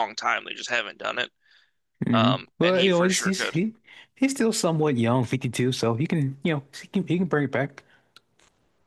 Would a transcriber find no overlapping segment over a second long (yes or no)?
no